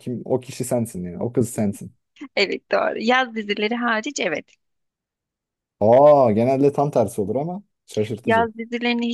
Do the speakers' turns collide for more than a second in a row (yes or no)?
no